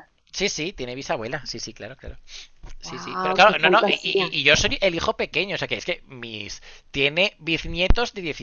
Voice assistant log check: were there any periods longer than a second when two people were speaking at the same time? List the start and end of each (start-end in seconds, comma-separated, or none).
2.8-4.3